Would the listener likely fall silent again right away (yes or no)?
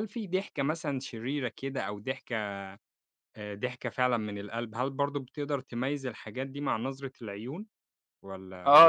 no